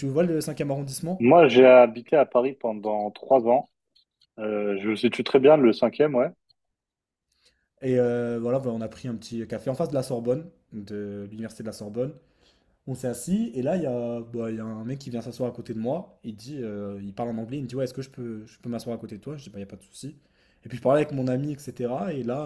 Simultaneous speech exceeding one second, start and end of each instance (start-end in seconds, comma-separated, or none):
none